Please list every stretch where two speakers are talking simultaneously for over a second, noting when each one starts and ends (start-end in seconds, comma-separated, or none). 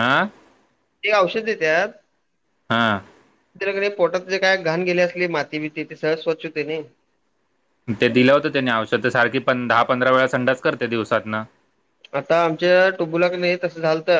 none